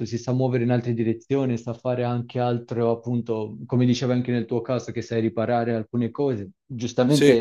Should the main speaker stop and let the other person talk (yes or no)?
no